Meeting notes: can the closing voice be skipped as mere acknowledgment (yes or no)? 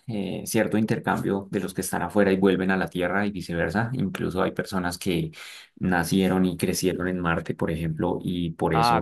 yes